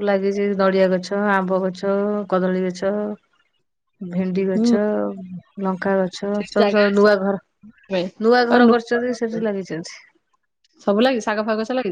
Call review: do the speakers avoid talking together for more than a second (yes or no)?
yes